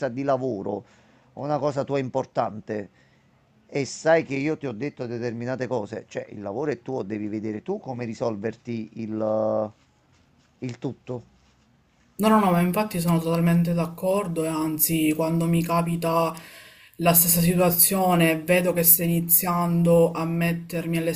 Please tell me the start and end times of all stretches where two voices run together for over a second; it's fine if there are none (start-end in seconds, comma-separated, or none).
none